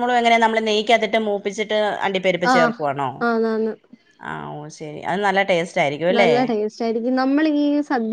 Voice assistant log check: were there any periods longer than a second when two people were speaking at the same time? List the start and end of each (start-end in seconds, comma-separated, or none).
none